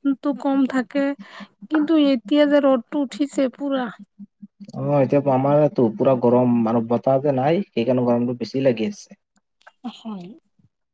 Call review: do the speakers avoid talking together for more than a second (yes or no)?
yes